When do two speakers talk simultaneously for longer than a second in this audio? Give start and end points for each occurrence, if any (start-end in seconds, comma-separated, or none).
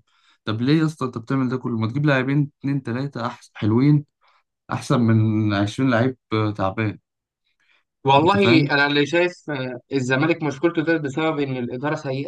none